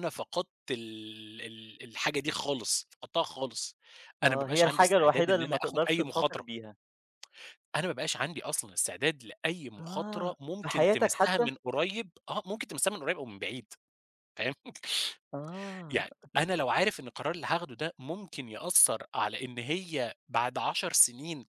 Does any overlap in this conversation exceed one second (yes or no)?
yes